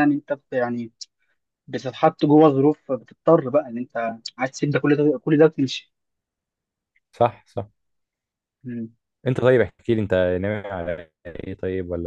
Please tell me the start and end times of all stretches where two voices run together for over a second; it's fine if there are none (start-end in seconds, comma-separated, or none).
none